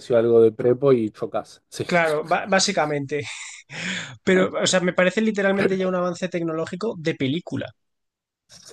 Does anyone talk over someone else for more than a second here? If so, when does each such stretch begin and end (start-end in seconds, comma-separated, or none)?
none